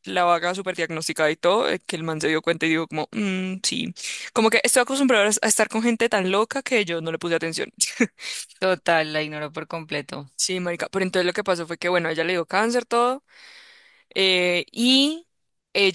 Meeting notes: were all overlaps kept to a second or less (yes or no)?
yes